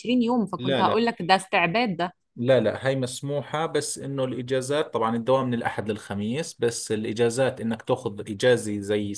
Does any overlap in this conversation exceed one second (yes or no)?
no